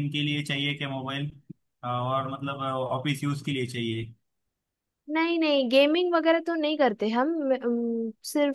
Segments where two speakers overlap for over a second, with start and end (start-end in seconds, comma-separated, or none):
none